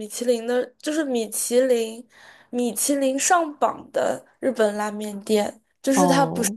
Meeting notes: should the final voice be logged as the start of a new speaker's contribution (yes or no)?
no